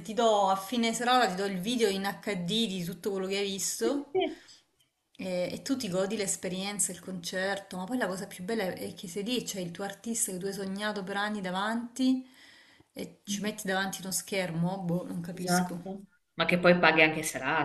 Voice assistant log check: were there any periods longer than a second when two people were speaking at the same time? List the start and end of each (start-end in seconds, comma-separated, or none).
none